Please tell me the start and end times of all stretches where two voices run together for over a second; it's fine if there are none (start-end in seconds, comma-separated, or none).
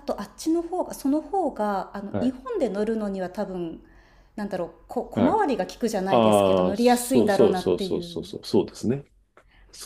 6.1-8.3